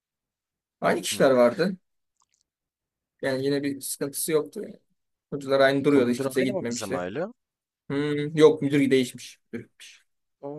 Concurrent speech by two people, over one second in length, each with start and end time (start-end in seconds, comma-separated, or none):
5.8-7.0